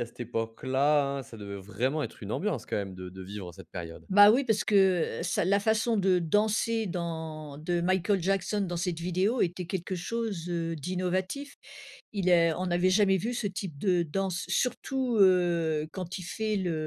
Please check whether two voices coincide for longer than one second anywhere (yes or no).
no